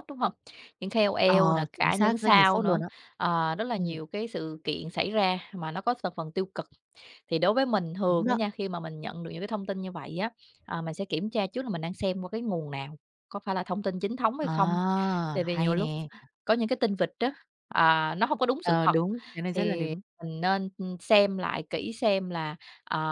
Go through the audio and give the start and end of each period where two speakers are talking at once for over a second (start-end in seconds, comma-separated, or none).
1.2-2.8